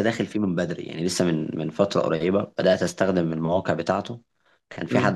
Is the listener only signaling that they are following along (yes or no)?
yes